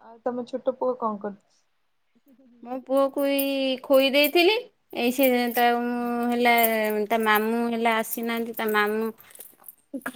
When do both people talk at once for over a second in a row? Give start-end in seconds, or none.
none